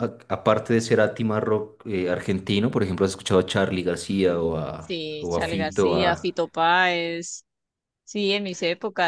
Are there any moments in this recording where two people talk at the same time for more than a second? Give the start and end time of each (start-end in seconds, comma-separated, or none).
4.8-6.3